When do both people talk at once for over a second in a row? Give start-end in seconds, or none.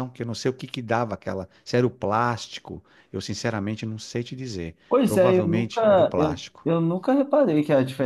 4.9-6.7